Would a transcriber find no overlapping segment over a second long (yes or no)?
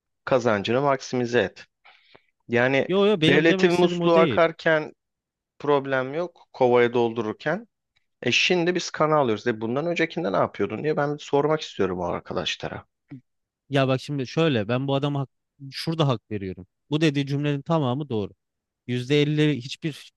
no